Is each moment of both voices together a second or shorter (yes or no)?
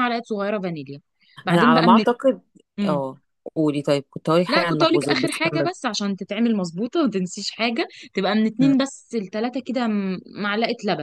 no